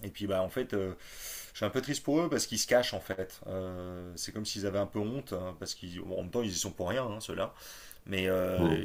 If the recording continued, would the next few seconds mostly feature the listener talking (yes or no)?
no